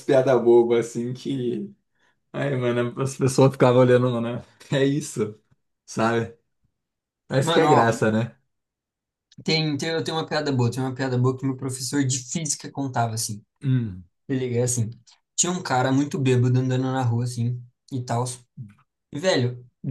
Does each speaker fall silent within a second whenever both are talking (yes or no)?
yes